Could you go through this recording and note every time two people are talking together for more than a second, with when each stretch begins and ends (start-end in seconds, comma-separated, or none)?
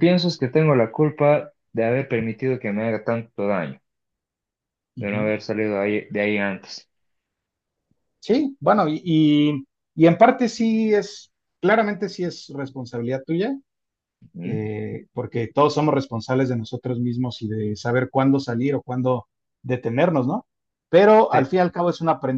none